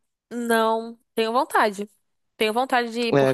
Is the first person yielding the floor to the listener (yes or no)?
yes